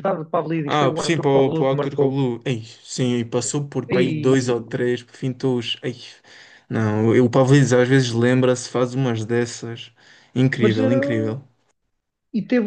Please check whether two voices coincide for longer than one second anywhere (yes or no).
yes